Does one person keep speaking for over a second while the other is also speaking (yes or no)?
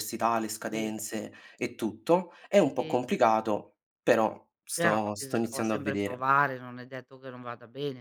yes